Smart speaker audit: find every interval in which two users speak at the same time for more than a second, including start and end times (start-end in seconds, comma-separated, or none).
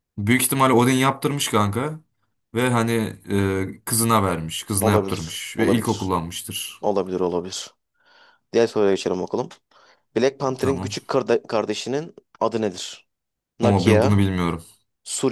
4.8-6.1